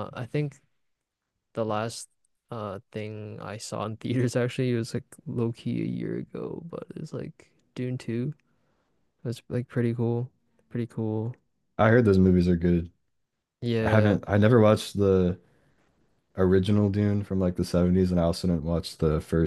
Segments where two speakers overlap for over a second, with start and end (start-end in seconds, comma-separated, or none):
none